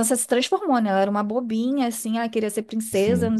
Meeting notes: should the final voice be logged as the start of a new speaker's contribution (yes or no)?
no